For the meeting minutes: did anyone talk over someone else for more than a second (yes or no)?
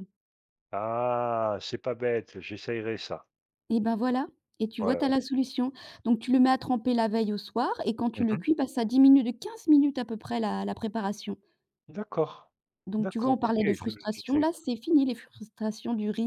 yes